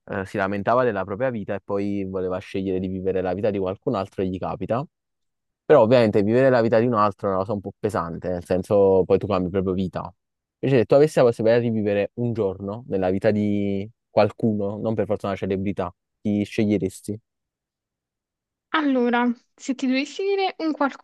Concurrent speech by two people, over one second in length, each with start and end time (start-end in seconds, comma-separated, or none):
none